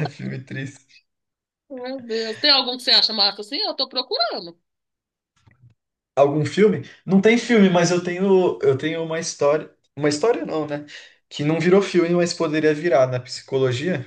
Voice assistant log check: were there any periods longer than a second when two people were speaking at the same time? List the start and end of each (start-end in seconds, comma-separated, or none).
none